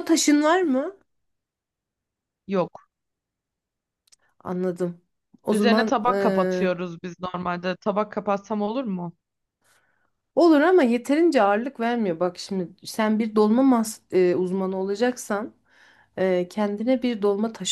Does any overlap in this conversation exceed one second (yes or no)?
yes